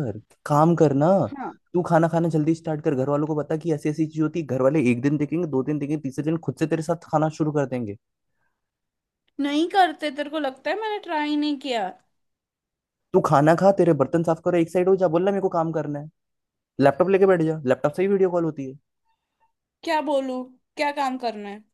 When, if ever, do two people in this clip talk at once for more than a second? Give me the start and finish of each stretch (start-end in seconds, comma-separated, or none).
none